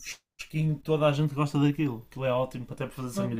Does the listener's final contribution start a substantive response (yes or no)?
yes